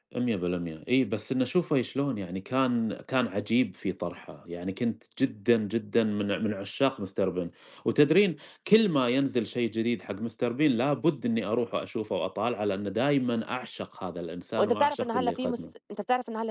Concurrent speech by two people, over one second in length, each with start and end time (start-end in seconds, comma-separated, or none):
14.6-15.9